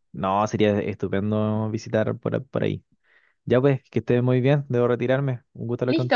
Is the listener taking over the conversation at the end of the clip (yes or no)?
yes